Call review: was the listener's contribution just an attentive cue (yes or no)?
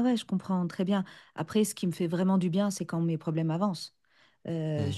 yes